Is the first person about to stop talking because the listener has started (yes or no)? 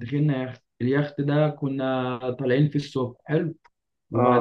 no